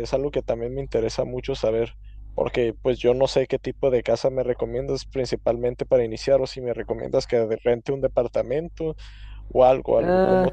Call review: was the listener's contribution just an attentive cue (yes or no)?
no